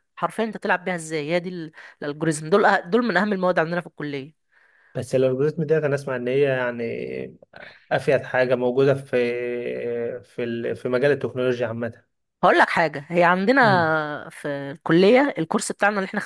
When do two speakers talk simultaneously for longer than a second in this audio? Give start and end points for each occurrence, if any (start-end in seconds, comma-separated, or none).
none